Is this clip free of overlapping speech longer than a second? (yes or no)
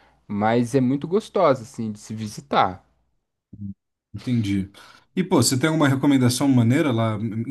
yes